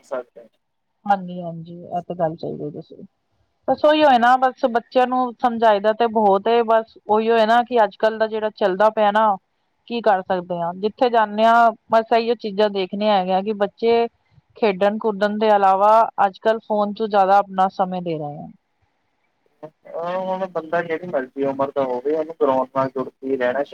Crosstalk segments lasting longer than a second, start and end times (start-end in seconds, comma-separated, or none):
none